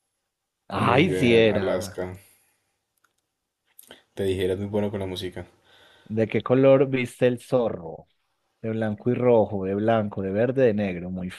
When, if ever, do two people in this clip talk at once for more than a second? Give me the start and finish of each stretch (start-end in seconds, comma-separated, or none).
0.7-2.0